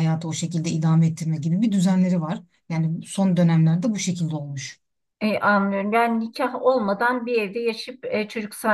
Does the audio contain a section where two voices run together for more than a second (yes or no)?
no